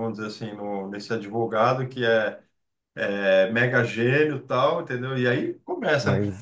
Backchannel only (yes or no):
yes